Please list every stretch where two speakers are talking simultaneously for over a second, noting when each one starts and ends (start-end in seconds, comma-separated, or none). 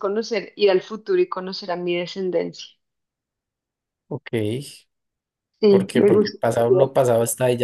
5.7-6.9